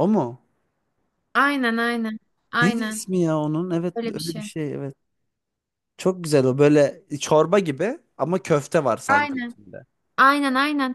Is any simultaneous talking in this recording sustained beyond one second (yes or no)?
no